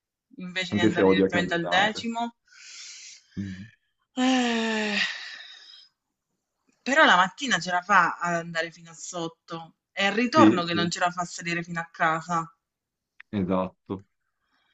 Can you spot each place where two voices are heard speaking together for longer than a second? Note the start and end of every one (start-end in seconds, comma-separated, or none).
0.7-2.1